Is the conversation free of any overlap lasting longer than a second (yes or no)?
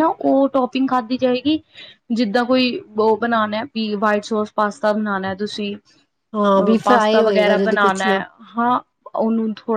no